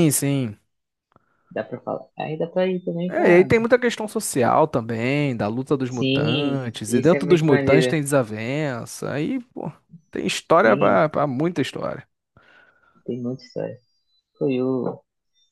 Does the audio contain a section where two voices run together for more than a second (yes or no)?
yes